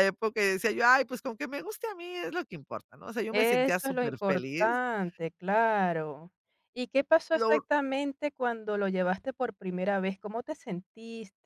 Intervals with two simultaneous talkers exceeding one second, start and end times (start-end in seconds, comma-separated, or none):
3.3-4.8